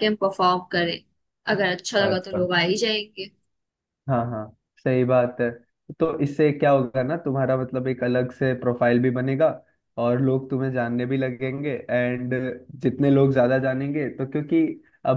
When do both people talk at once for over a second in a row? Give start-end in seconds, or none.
none